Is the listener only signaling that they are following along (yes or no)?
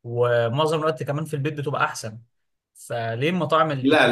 no